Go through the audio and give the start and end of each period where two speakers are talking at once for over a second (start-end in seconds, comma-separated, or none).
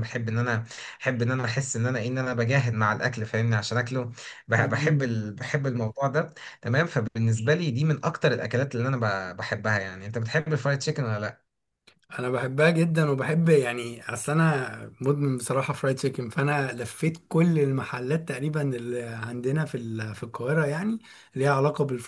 none